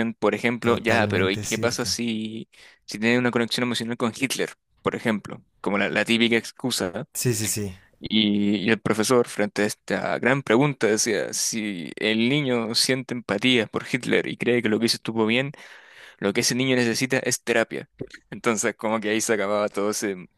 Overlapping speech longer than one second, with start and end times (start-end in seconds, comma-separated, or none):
0.6-2.0